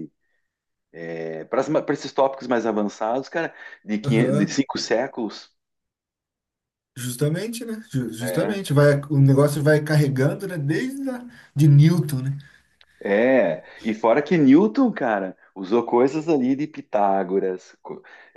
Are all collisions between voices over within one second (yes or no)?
yes